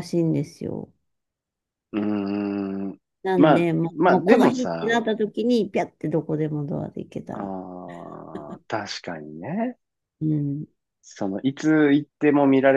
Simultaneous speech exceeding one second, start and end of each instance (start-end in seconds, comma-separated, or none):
3.4-5.1